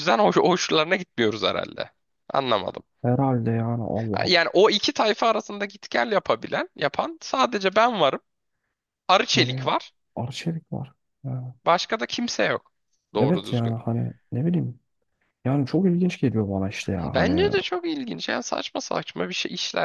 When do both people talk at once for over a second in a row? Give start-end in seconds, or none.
none